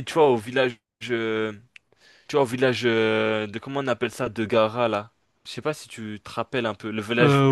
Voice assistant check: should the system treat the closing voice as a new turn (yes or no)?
yes